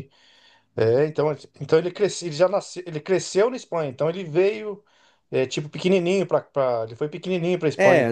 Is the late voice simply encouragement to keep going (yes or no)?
no